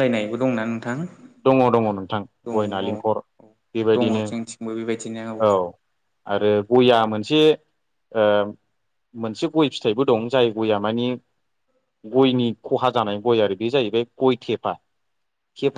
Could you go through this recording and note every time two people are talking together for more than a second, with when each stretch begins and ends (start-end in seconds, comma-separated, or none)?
3.9-5.2